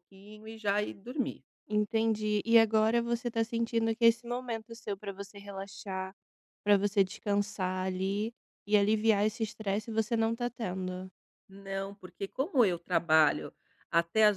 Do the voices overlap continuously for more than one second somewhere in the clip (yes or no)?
no